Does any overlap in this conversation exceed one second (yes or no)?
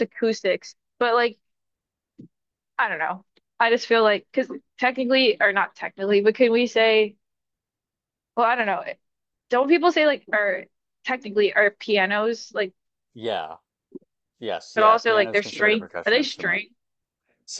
yes